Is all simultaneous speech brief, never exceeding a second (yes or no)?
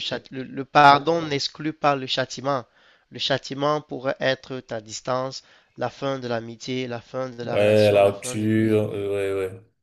no